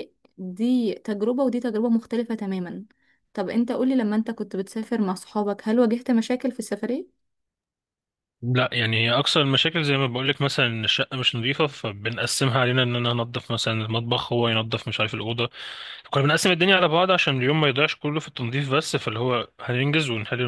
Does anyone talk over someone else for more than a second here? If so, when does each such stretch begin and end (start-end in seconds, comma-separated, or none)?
none